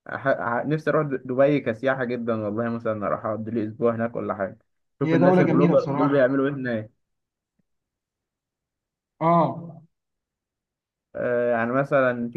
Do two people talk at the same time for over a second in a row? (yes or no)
yes